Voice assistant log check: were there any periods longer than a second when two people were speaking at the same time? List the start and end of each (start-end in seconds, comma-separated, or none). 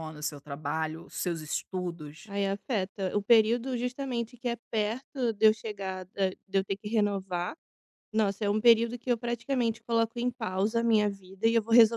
none